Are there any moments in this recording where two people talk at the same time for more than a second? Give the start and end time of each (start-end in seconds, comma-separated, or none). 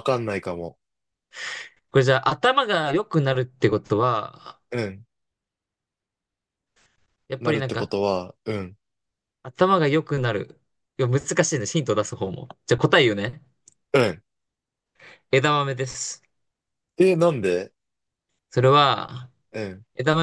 none